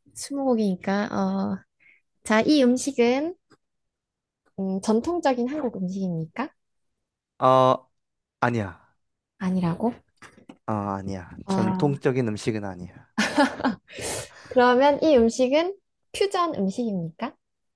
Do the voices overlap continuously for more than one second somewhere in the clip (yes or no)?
no